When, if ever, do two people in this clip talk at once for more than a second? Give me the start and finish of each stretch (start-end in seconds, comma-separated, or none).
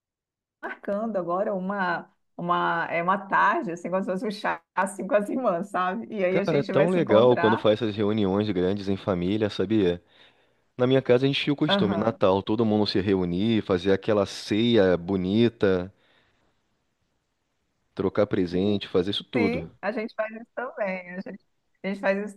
6.3-7.7